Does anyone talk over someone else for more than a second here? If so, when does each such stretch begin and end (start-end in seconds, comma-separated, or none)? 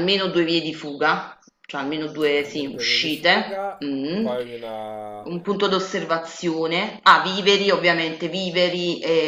2.4-4.3